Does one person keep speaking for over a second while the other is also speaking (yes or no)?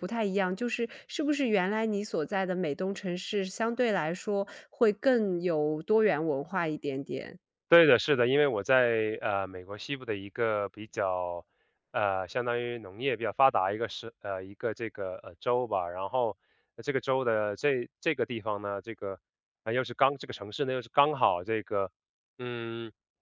no